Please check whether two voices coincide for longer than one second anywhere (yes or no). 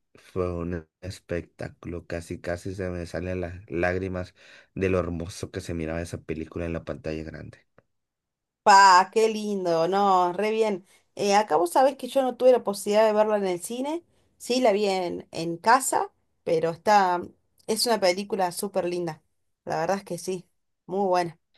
no